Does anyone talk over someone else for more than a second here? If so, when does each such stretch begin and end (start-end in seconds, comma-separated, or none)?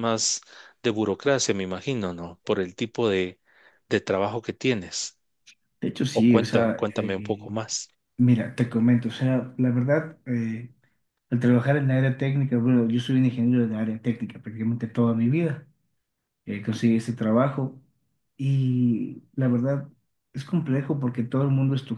6.1-7.5